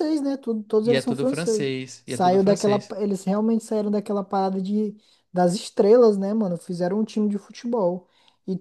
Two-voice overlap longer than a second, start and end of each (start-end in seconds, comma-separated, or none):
0.8-3.0